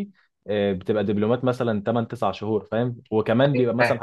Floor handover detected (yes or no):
no